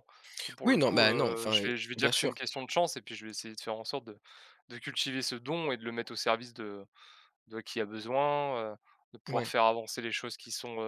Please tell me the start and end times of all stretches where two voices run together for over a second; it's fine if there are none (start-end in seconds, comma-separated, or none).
0.6-2.3